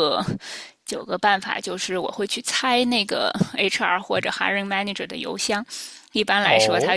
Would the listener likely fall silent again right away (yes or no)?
yes